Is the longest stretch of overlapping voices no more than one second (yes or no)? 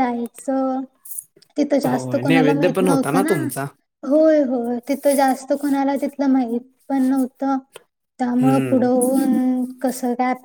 no